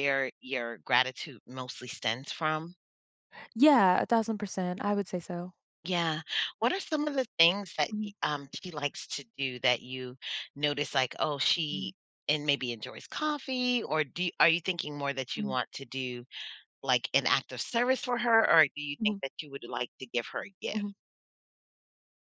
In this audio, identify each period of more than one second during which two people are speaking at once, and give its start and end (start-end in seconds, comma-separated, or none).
none